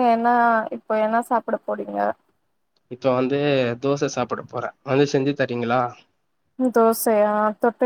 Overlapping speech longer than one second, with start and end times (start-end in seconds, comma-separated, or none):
none